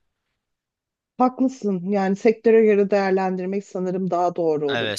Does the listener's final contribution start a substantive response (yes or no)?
yes